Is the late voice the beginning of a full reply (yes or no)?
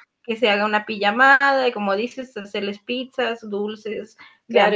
yes